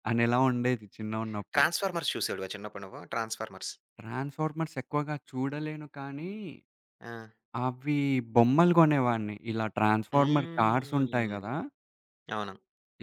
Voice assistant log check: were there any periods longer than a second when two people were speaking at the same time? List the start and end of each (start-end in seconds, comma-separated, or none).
10.1-11.4